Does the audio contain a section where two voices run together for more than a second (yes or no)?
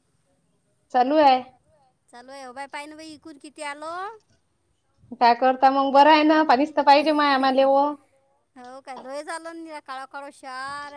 no